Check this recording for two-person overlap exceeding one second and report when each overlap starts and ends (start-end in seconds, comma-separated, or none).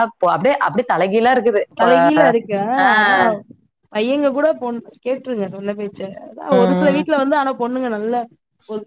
none